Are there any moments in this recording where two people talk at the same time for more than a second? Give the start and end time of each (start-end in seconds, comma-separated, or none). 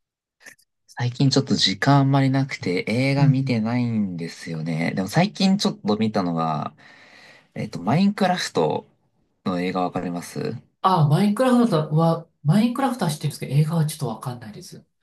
none